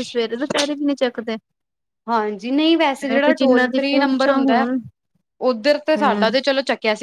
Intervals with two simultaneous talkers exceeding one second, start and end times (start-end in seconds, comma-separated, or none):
3.1-4.6